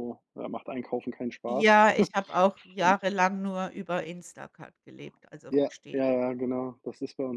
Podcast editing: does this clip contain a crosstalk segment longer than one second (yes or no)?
no